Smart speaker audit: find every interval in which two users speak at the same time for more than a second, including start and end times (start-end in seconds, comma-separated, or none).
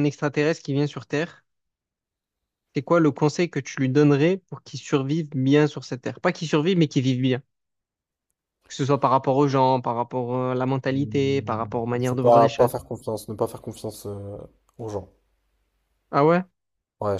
10.9-12.7